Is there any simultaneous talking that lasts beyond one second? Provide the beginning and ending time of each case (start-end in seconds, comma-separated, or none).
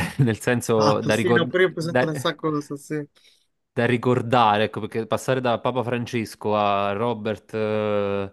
0.8-2.4